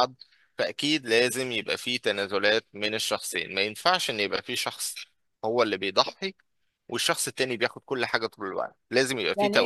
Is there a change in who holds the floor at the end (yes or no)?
yes